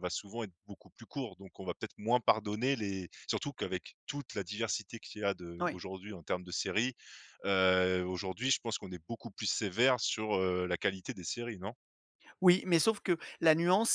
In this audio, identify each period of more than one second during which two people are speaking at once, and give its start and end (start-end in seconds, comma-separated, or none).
none